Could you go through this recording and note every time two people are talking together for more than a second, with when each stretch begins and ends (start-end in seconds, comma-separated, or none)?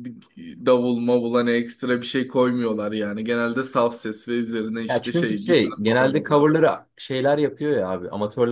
4.9-6.5